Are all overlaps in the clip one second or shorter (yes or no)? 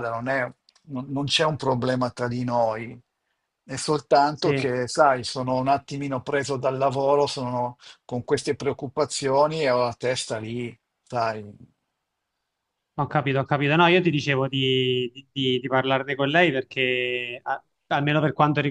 yes